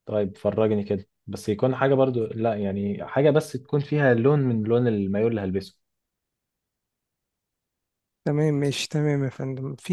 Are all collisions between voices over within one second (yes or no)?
yes